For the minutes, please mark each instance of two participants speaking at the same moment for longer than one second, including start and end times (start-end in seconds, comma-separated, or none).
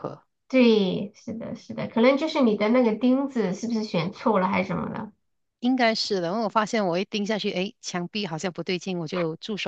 none